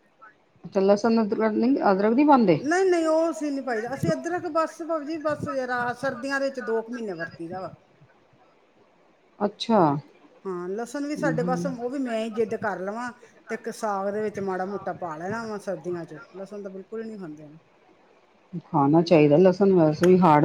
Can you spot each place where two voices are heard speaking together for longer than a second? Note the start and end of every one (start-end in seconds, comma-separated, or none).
none